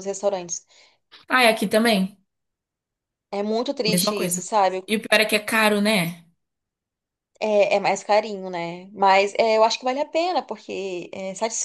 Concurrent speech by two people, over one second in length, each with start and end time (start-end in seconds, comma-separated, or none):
none